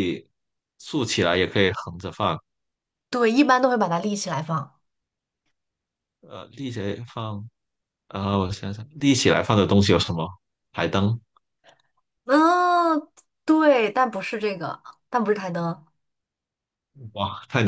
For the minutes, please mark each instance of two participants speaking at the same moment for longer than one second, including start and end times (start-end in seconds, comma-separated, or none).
none